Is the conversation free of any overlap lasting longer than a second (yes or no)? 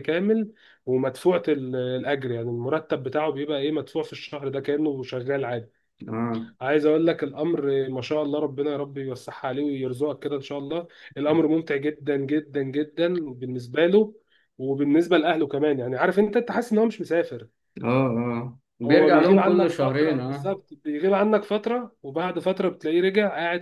no